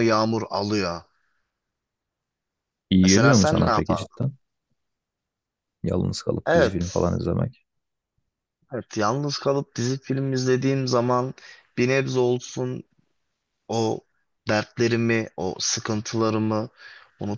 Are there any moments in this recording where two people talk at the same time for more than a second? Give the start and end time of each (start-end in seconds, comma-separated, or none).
3.0-4.2